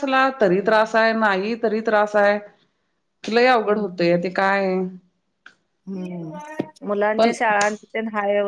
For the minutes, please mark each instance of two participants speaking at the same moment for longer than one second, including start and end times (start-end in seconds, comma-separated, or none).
none